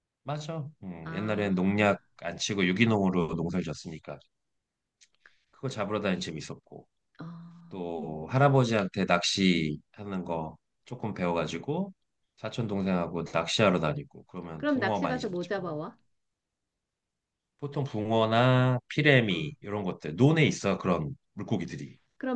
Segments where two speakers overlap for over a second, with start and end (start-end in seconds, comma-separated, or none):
14.6-15.8